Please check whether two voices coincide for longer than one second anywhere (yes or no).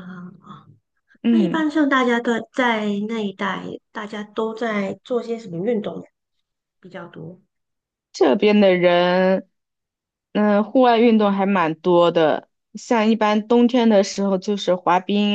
no